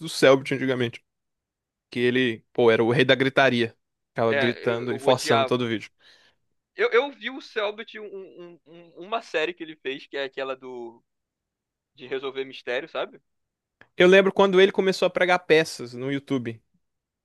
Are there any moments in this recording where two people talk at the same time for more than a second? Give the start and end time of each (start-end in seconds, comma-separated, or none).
4.3-5.7